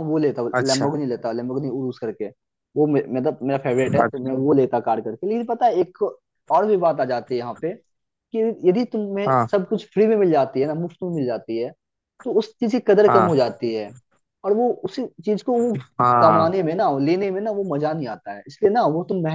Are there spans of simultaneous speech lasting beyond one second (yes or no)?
no